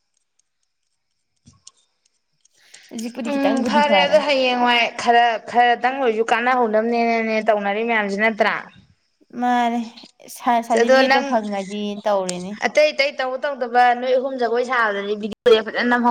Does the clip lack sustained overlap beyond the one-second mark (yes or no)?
yes